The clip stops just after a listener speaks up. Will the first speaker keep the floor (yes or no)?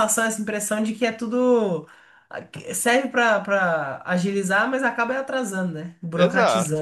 no